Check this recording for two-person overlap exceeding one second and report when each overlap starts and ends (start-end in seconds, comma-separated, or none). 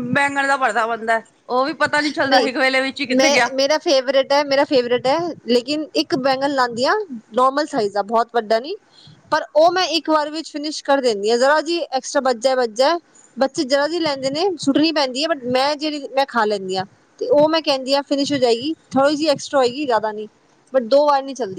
none